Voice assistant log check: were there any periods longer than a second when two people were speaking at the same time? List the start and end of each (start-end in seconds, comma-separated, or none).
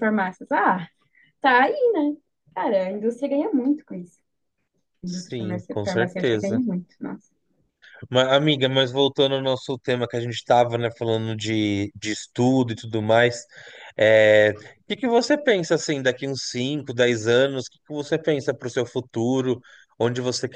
5.0-6.6